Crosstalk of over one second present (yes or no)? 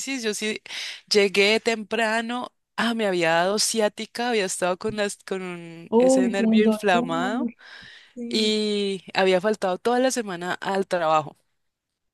yes